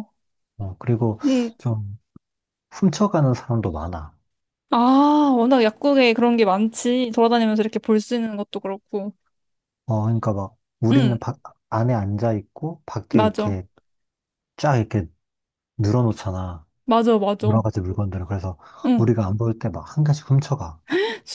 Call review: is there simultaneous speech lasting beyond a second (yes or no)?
no